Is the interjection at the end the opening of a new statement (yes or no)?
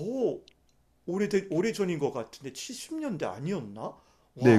yes